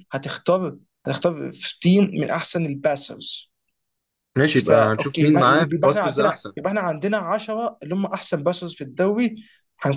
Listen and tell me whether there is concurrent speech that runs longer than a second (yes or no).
yes